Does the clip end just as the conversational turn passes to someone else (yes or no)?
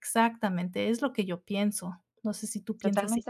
yes